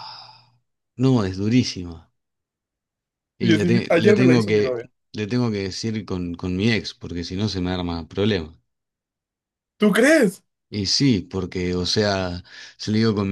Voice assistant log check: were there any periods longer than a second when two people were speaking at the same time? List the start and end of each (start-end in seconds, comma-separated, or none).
3.4-4.8